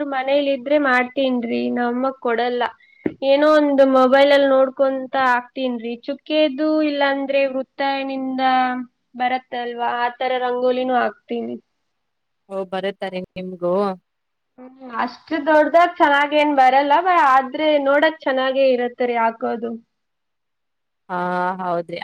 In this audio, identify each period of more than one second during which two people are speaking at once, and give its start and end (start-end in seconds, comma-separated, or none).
none